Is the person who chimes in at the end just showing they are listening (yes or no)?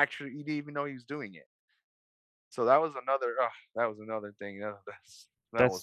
no